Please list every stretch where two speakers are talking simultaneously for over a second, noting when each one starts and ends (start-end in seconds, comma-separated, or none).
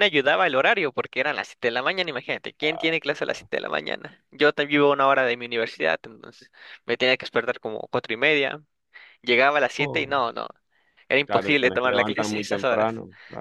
11.2-12.9